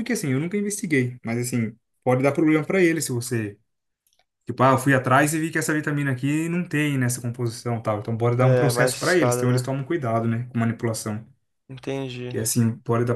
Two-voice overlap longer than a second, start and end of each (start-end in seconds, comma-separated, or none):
8.4-9.8